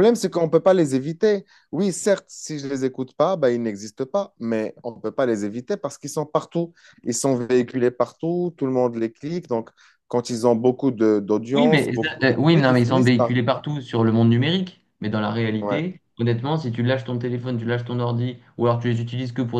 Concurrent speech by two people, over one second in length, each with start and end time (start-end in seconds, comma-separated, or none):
11.5-13.3